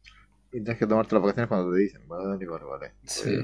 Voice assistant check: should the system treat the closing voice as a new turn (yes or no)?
yes